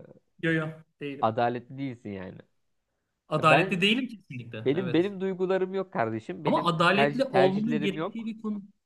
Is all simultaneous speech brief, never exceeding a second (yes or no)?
no